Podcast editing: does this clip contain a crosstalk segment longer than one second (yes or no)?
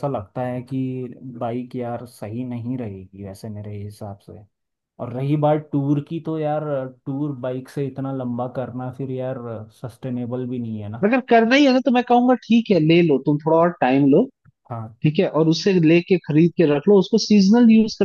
no